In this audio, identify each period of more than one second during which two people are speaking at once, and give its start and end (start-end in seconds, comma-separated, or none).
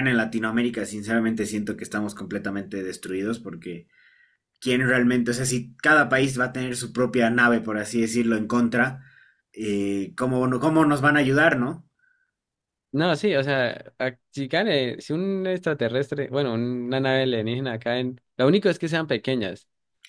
none